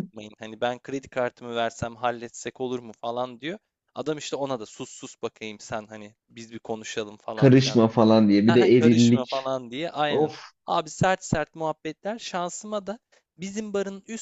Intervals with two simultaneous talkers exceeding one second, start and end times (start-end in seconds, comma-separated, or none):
7.3-9.3